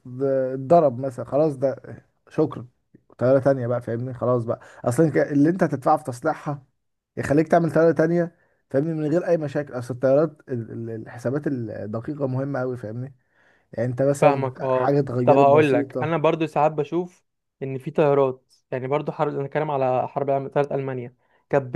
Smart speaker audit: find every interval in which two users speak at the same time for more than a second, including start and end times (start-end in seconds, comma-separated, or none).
14.2-16.1